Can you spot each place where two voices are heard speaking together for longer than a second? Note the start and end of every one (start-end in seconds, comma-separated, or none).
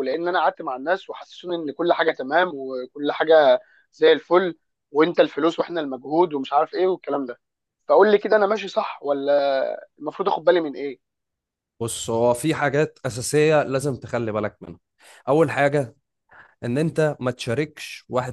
none